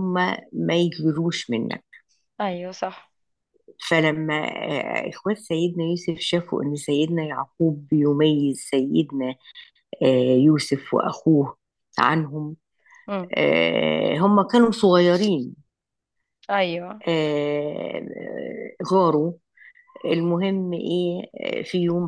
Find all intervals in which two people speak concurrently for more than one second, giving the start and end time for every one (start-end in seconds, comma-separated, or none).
none